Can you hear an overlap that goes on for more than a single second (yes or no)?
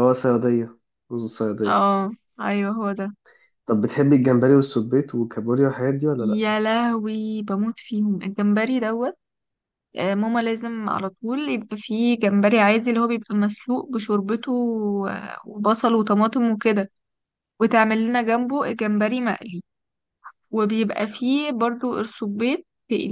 no